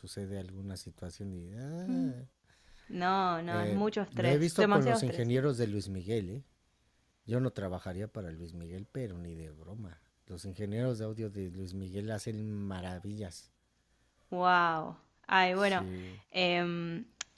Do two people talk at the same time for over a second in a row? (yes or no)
yes